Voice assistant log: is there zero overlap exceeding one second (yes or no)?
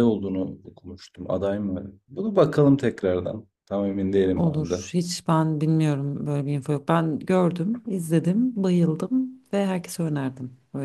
yes